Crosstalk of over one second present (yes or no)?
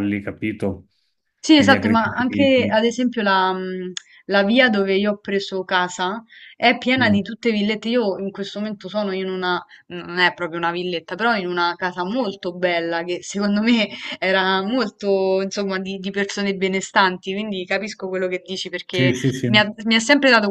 yes